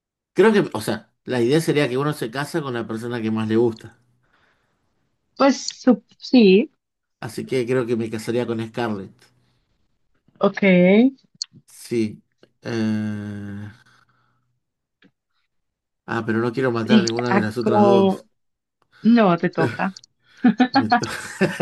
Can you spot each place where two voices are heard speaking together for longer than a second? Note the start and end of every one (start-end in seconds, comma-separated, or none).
16.9-18.2